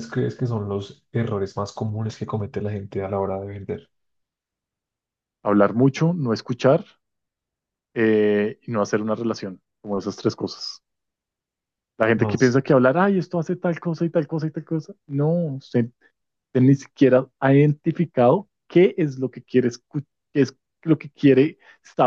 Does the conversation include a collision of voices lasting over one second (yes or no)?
no